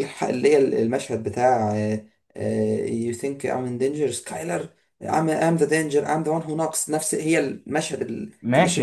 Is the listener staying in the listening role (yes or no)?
no